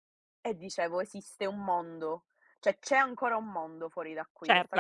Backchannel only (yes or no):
no